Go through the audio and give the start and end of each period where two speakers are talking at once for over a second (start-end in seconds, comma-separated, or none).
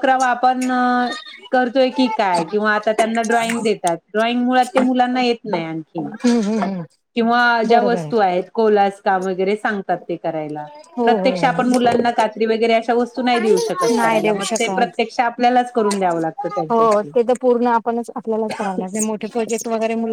13.1-15.0